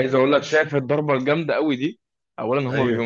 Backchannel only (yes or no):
yes